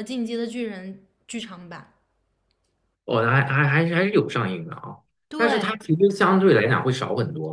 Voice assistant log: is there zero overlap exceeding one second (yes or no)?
yes